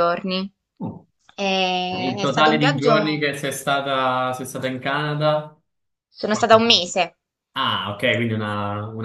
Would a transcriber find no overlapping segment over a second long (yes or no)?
no